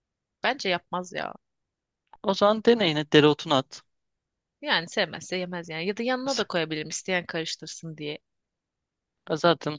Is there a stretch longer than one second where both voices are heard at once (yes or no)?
no